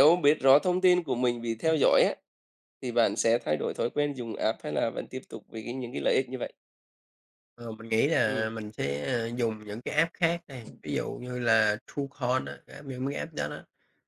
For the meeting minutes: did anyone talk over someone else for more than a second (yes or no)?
no